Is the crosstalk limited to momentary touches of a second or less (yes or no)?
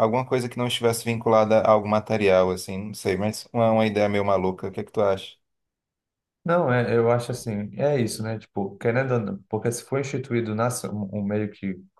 yes